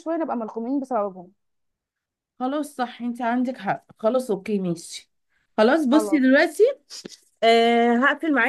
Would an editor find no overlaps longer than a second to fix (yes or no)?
yes